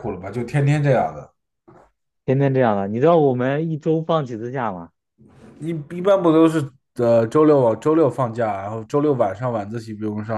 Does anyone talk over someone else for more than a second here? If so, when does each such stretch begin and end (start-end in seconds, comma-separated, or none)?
none